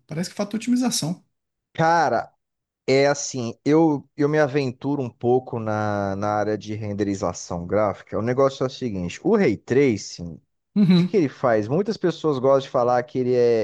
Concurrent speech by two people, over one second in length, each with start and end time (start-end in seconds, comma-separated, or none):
none